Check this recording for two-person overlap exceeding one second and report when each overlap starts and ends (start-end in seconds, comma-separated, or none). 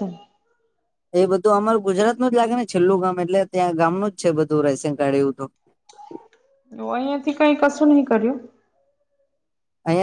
none